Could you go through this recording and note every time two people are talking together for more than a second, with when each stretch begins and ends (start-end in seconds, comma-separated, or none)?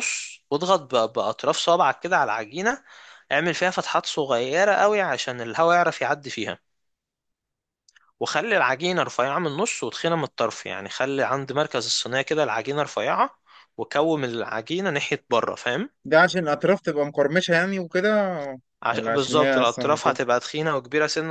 18.9-20.2